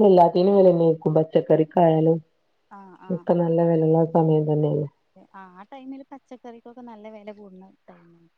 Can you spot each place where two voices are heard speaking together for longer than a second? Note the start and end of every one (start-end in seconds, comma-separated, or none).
none